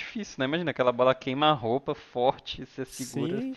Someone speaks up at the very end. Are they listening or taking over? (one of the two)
taking over